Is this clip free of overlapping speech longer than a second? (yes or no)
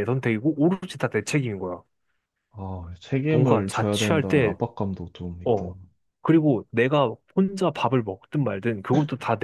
no